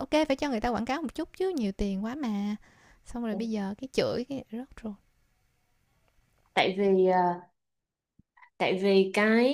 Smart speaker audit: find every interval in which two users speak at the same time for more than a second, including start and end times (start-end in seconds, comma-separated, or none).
none